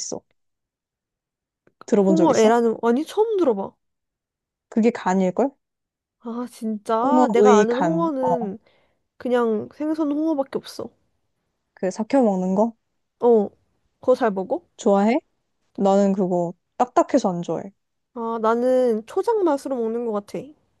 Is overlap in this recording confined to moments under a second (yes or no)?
no